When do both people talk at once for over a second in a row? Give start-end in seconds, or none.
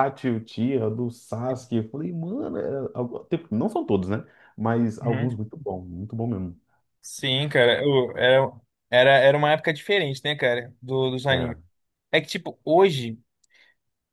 none